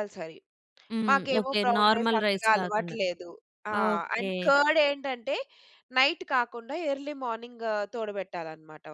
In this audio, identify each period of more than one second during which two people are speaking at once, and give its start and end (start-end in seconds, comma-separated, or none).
1.1-3.0